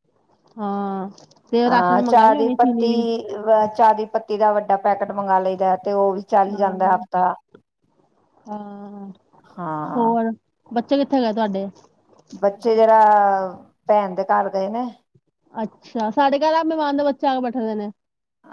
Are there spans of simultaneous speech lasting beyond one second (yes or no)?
yes